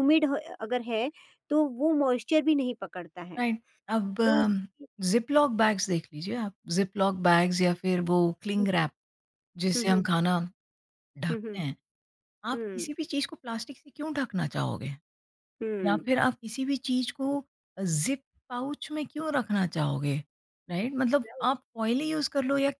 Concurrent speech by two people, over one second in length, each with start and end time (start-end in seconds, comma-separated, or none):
none